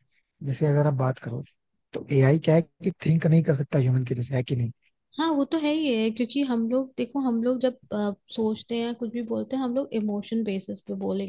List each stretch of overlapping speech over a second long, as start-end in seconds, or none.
none